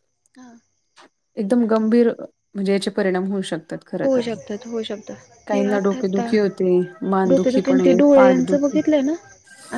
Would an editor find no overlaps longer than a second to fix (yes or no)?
no